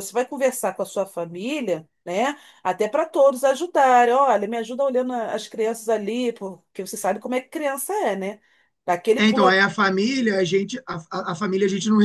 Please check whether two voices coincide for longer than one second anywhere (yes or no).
no